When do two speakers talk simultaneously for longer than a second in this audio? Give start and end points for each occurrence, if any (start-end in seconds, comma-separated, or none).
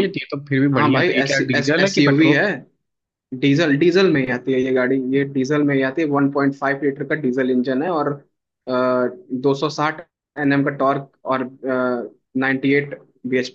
0.7-2.4